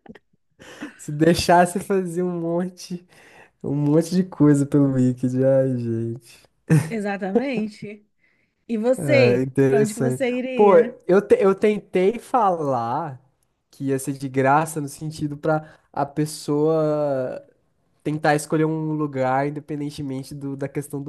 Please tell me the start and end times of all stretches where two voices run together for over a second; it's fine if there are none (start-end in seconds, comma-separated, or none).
9.0-10.9